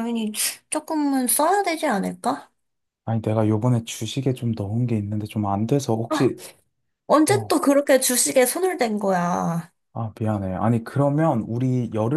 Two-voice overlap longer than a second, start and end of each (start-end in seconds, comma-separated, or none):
none